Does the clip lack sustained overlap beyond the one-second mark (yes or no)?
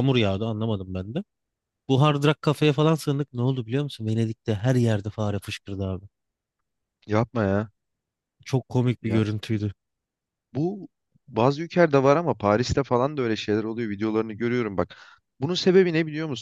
yes